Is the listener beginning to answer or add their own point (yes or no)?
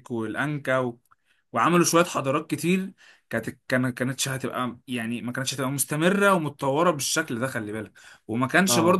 no